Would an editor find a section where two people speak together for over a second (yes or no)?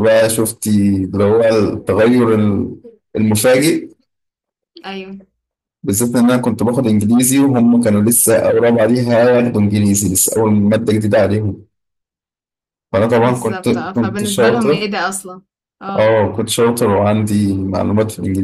yes